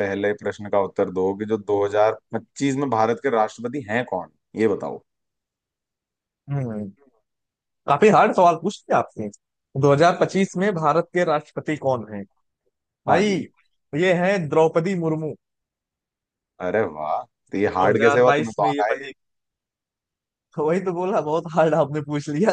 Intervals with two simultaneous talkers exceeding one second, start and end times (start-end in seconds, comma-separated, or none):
17.7-19.1